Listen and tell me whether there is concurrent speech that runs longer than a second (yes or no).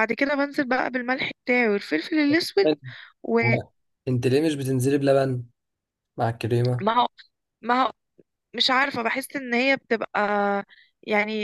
no